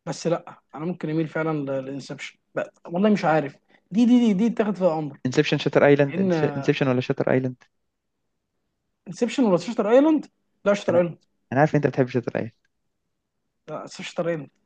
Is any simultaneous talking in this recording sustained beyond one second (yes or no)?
no